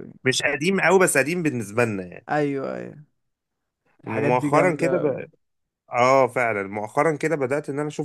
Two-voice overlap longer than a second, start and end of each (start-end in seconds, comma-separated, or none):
4.0-5.3